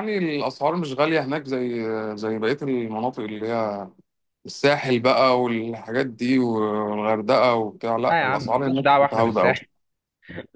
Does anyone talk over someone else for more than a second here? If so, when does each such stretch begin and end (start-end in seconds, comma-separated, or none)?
8.1-9.5